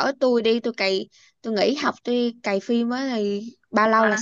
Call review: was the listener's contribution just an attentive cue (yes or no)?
no